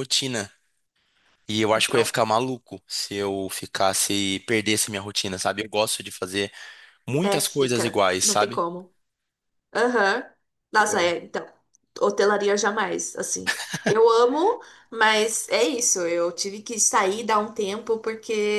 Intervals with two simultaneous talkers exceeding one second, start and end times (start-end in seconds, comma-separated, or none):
7.2-8.6